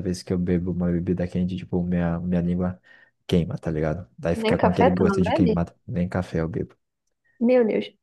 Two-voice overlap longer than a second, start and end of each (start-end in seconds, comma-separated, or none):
4.3-5.6